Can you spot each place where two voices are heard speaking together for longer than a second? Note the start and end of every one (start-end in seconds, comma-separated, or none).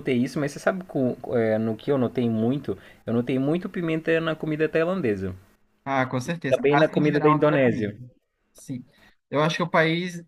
6.5-8.0